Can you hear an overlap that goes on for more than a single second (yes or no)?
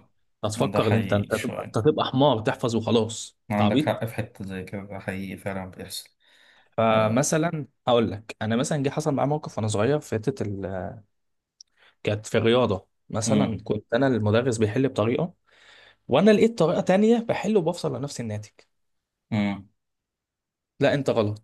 yes